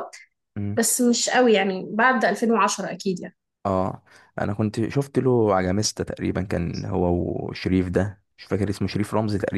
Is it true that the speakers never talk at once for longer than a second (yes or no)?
yes